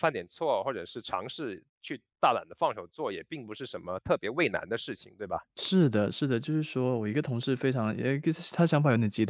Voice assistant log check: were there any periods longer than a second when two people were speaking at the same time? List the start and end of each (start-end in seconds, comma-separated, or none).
none